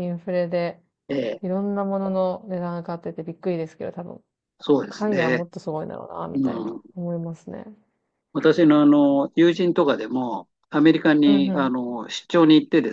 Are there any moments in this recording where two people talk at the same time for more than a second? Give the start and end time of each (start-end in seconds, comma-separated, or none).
none